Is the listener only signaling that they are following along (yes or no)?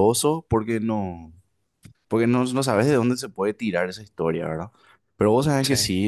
yes